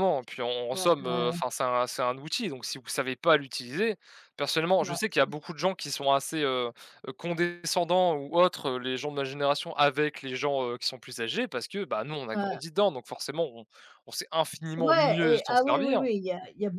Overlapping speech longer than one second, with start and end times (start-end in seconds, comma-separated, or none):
14.8-16.0